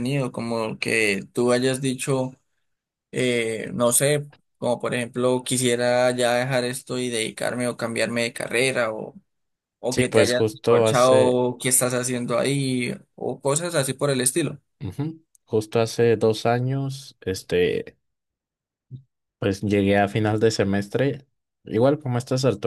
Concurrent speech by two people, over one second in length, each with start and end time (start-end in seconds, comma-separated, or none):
9.9-11.4